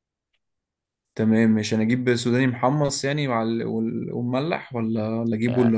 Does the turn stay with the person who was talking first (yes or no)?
no